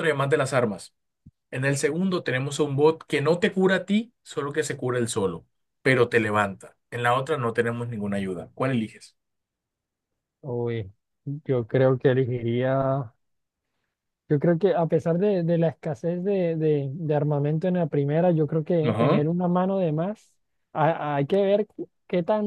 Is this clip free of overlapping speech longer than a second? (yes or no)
yes